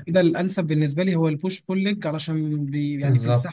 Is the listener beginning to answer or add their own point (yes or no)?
no